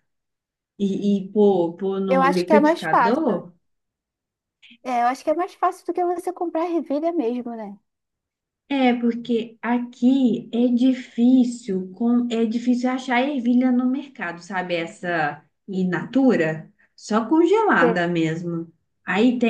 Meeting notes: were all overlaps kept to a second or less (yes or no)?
no